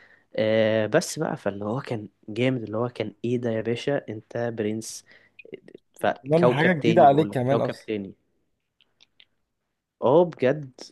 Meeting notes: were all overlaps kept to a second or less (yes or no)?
no